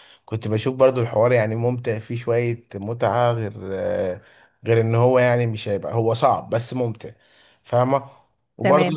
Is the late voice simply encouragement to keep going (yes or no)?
no